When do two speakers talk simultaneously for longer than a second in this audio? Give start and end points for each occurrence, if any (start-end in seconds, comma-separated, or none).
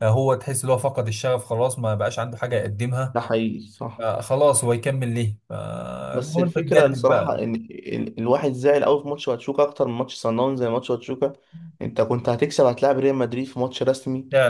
6.1-7.4